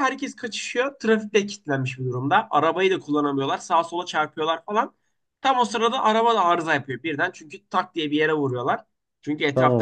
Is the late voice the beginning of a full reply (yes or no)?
no